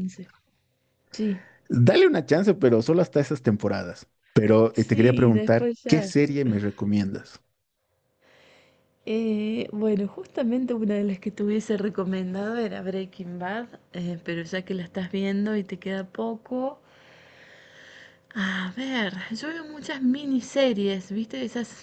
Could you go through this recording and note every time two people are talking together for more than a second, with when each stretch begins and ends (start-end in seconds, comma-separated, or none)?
4.7-6.1